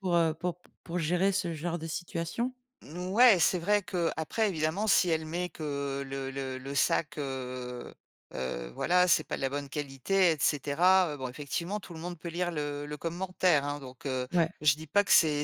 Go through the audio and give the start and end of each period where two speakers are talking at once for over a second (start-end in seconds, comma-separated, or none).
none